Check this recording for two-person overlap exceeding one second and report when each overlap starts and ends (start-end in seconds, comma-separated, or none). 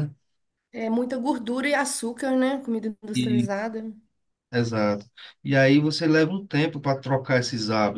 none